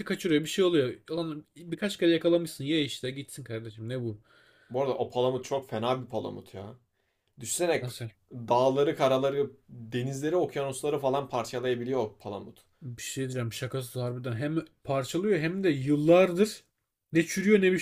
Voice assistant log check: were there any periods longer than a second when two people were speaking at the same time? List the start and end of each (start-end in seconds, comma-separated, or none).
none